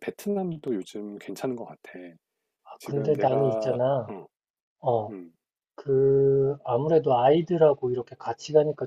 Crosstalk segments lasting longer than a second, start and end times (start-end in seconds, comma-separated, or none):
2.8-4.1